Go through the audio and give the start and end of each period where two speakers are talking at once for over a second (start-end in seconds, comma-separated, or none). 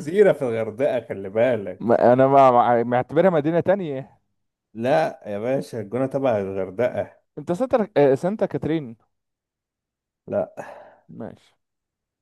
none